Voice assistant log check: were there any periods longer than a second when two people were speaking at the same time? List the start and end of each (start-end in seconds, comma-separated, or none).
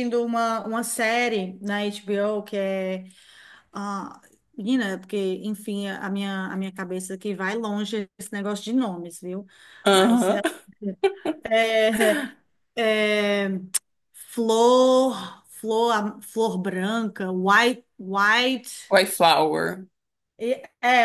none